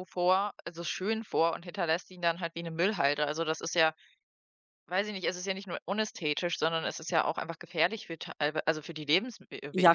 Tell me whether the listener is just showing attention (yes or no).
no